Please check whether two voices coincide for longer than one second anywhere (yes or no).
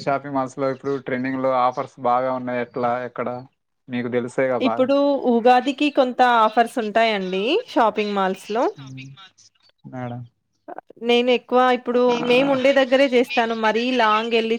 no